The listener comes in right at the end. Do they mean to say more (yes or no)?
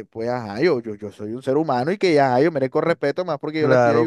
yes